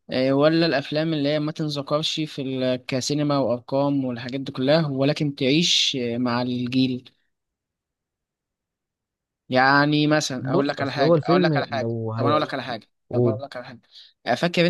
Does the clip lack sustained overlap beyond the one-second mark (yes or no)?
no